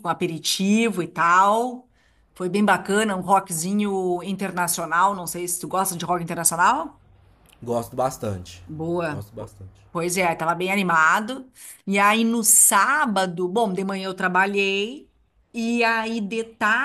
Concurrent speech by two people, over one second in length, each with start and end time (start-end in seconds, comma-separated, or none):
none